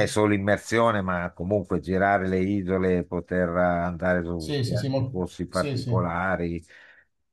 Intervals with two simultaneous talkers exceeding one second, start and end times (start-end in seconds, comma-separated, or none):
4.3-6.0